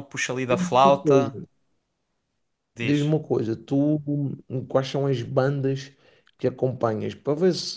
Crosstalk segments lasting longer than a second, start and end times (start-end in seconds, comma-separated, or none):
none